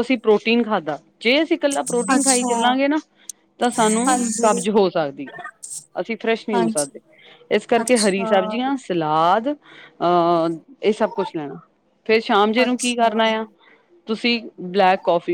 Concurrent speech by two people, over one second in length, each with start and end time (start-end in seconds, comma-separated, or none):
none